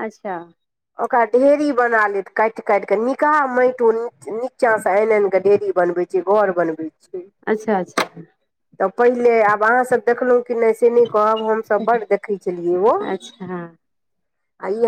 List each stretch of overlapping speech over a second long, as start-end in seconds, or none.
none